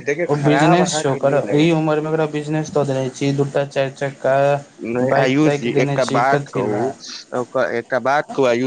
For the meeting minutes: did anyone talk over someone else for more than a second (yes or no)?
yes